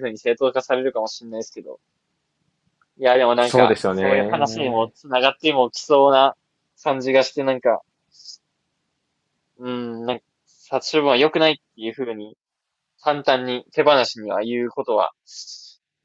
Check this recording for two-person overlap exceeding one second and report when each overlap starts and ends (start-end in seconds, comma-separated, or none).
3.4-4.9